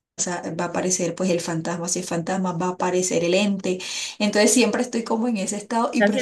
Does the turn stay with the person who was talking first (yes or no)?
no